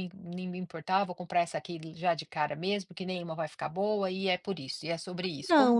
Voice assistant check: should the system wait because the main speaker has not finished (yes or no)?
no